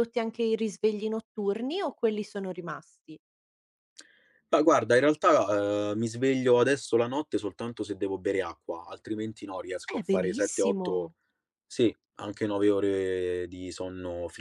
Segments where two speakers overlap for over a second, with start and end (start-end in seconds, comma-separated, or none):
9.9-11.1